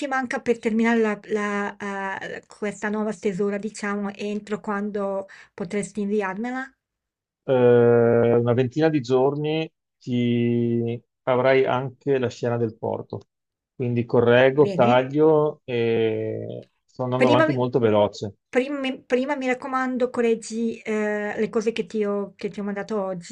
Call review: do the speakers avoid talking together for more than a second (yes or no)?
yes